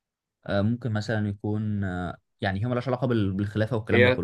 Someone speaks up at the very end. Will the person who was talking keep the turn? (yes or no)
no